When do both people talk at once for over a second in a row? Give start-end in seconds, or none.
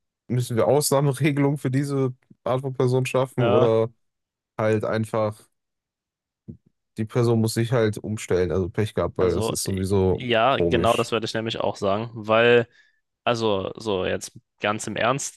9.2-11.1